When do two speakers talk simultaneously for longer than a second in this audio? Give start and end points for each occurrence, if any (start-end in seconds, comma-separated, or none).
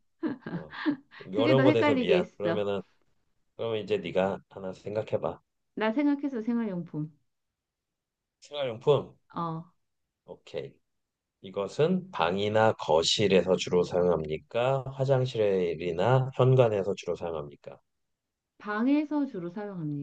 1.3-2.6